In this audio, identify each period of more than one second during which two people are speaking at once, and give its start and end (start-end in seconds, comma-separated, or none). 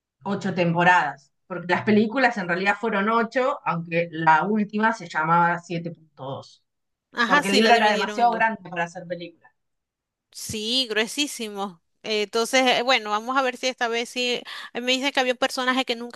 7.2-8.4